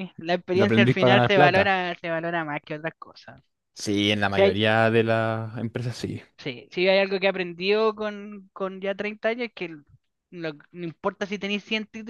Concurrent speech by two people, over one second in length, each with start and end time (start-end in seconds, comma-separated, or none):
0.5-1.7